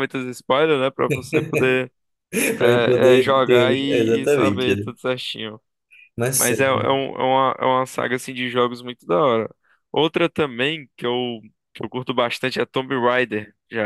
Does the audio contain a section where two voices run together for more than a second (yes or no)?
yes